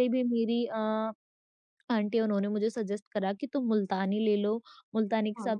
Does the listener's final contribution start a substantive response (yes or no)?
no